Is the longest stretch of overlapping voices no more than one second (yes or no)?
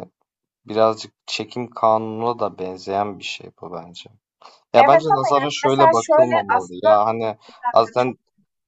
no